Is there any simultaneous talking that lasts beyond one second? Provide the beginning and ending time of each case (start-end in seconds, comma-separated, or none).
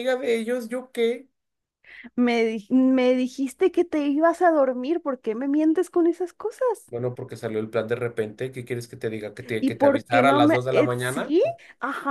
9.6-11.3